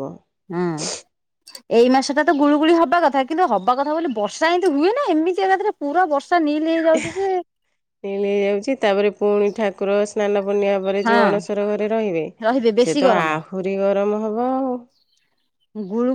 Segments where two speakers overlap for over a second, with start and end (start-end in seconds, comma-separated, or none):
none